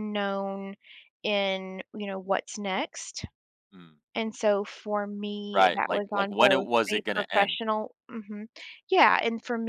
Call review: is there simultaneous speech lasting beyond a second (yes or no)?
yes